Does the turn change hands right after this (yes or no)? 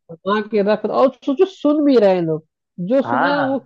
yes